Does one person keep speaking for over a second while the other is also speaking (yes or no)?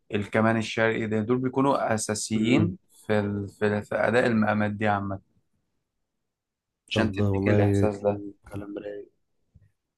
yes